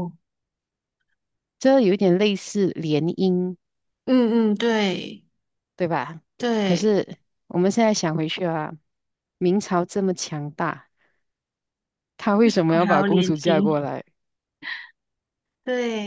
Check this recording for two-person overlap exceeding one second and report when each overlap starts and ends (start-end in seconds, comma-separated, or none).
12.4-13.8